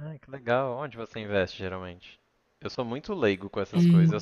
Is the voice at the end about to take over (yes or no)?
no